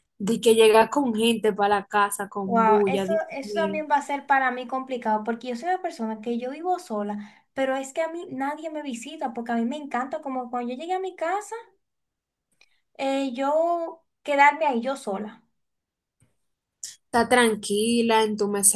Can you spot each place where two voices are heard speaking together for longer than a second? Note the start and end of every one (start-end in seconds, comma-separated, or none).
2.4-3.8